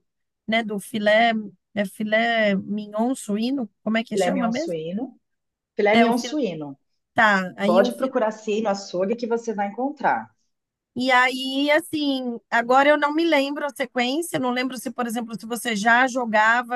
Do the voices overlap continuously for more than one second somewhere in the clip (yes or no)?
no